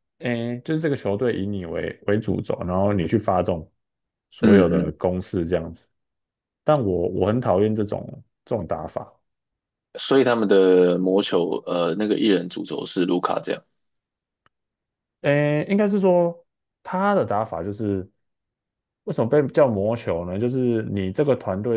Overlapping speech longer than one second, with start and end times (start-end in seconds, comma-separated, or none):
none